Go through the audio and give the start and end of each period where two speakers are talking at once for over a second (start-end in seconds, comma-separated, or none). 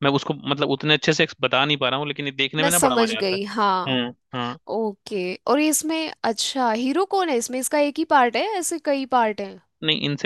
2.6-4.0